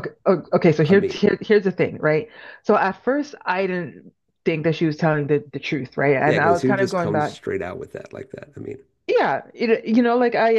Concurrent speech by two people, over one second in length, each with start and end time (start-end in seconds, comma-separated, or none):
6.2-7.4